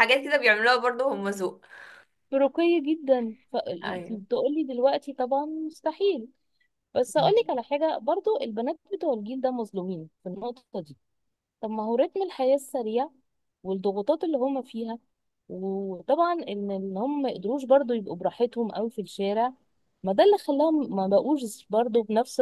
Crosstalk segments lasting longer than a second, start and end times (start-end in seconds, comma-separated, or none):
none